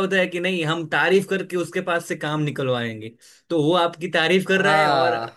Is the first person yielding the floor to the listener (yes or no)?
no